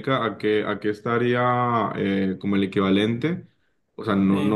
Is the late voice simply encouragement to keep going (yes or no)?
yes